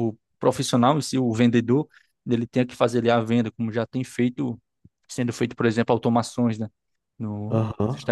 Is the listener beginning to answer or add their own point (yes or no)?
no